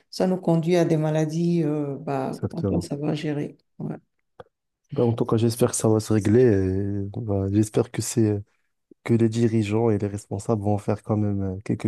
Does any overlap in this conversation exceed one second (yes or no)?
no